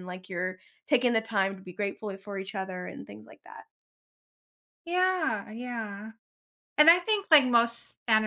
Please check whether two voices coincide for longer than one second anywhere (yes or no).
no